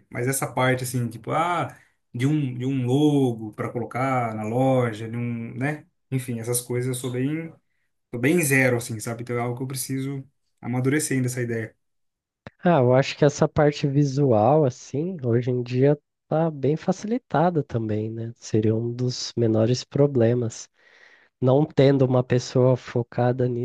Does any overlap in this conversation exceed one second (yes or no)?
no